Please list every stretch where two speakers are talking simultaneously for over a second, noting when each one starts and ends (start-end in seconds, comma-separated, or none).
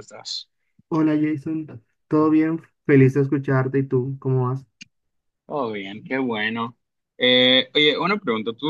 none